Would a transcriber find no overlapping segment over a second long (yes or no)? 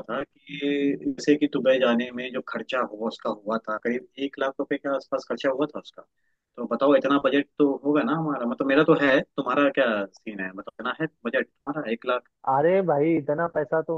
yes